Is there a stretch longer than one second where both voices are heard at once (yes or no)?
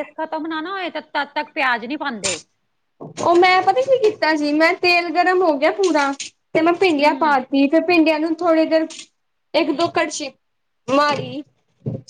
no